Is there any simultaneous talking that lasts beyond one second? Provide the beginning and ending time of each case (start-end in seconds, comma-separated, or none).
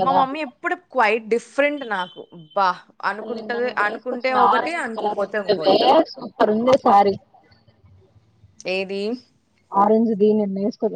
3.1-5.8